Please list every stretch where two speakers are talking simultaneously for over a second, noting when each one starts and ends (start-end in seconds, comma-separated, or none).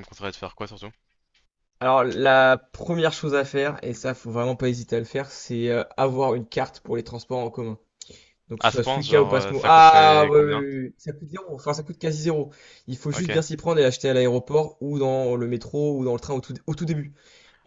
8.6-10.6